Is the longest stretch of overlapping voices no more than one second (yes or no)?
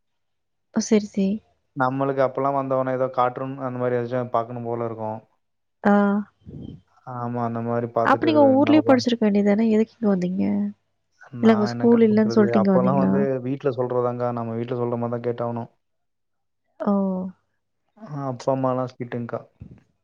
no